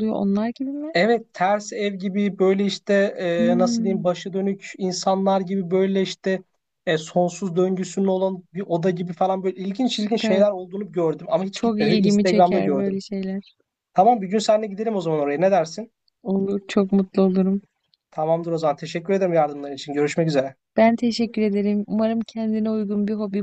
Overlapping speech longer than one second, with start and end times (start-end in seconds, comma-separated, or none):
11.5-13.0